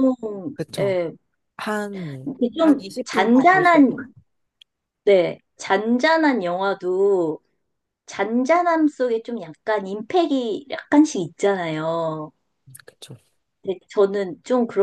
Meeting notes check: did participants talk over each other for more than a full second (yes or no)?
yes